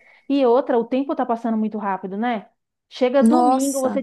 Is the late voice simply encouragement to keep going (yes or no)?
yes